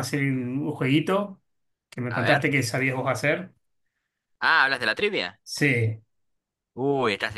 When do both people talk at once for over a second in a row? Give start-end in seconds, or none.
none